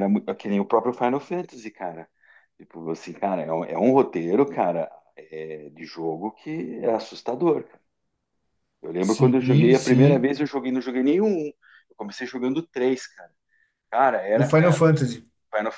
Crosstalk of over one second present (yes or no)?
yes